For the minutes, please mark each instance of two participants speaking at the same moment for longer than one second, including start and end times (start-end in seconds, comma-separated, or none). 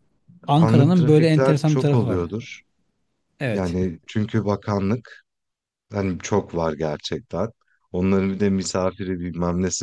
0.6-2.2